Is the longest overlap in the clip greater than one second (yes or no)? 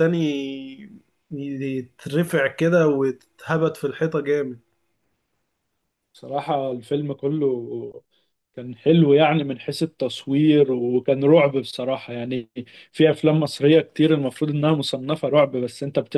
no